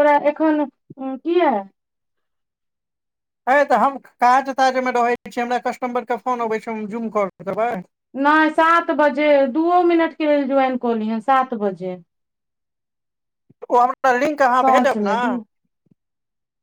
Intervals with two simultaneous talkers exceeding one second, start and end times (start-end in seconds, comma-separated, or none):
none